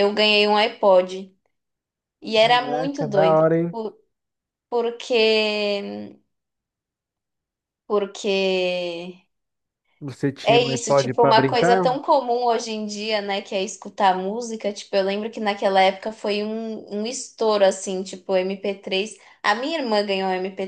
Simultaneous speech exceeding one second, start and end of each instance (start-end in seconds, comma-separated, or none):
2.4-3.8, 10.4-11.9